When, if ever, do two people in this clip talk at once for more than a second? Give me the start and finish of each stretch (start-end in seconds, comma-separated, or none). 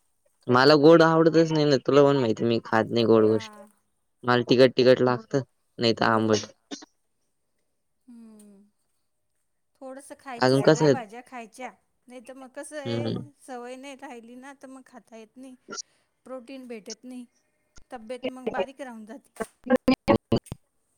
none